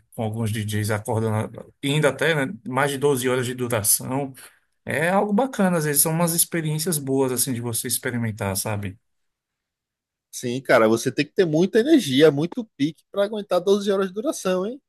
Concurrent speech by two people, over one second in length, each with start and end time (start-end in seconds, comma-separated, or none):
none